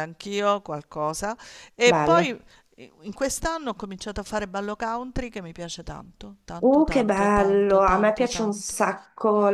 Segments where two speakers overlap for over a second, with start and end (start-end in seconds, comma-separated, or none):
6.6-8.8